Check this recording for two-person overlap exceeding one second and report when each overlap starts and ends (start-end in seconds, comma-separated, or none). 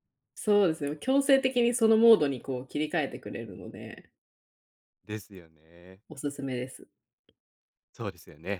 none